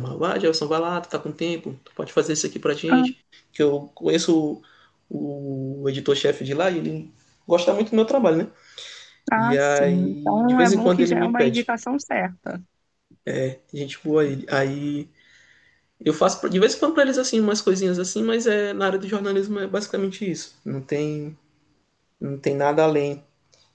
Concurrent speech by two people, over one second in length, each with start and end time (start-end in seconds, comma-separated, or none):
9.4-11.7